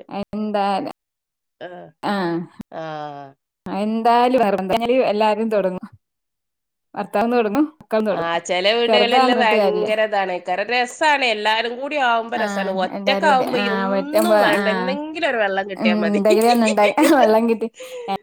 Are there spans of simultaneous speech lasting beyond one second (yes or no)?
yes